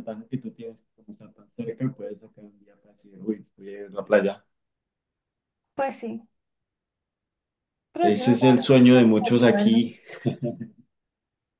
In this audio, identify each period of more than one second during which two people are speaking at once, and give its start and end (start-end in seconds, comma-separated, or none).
8.0-10.0